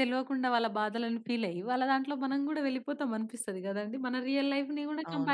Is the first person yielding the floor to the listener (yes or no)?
yes